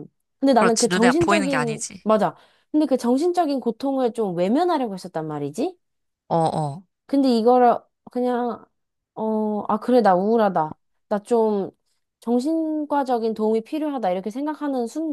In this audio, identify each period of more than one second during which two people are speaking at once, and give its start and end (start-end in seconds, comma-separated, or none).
0.5-2.1